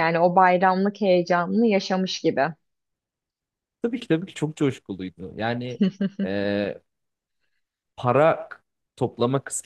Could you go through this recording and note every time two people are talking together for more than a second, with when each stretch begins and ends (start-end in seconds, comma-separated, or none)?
none